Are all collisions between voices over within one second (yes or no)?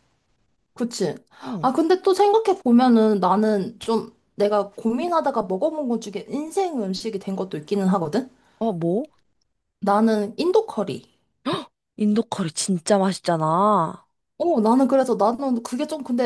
yes